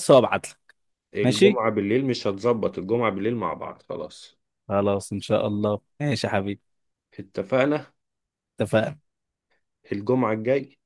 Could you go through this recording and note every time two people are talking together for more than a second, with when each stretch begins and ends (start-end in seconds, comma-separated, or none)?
none